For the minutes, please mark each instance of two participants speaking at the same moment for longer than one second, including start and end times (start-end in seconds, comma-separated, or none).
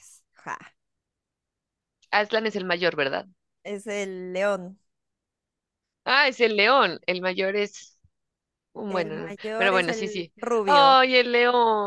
8.9-10.9